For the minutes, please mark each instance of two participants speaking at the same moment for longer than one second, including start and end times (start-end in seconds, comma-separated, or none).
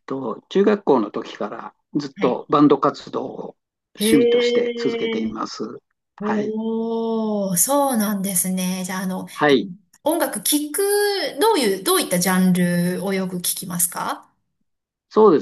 4.0-5.3